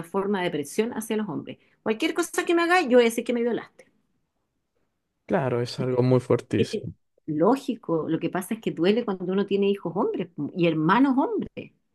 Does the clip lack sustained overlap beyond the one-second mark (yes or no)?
yes